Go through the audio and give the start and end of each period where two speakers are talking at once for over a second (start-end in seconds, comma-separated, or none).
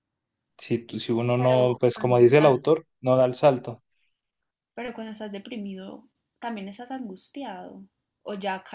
1.4-2.7